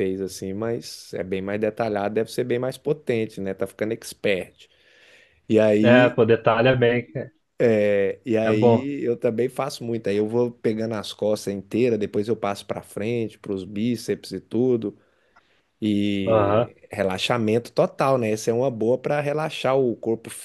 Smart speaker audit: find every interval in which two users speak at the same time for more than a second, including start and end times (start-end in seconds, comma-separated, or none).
none